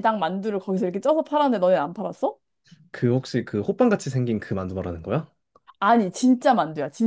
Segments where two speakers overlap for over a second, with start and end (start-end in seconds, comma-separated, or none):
none